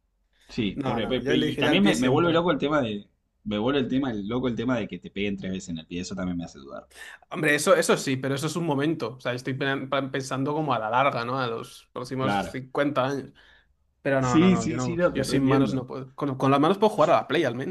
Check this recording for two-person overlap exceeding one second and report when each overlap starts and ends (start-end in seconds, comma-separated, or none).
0.7-2.5, 14.2-15.8